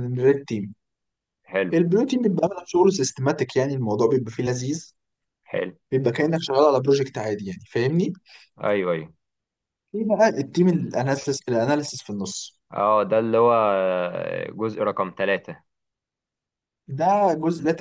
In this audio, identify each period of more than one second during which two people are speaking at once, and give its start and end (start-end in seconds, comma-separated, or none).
none